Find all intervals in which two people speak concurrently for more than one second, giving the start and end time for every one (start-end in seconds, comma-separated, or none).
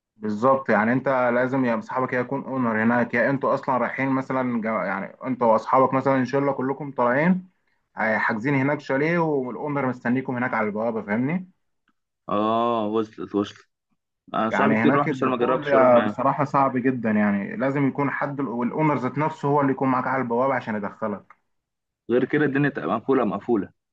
14.5-16.3